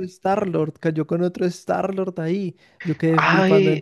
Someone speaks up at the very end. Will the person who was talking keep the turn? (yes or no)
no